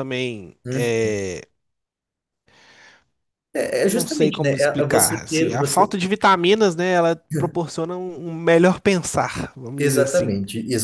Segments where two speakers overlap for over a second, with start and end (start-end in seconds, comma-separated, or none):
3.8-5.8